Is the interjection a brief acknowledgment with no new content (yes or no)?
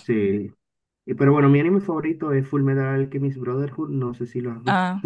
no